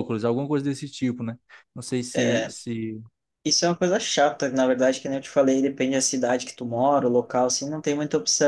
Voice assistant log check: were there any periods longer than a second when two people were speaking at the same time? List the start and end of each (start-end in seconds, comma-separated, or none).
none